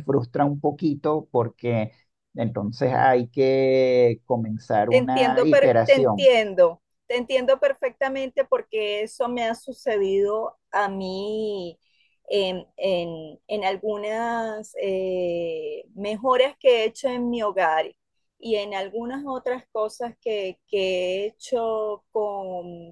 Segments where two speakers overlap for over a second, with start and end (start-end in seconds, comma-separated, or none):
4.9-6.3